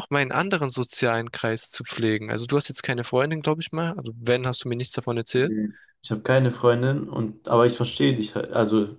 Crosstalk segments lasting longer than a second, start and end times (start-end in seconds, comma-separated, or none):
none